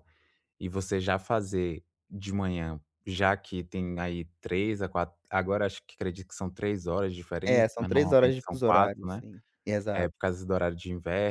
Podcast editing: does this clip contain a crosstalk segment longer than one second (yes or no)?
yes